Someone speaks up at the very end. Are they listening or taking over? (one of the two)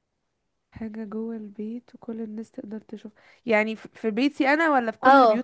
taking over